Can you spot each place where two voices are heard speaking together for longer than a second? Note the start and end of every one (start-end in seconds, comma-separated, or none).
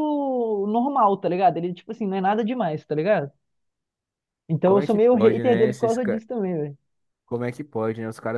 4.6-6.2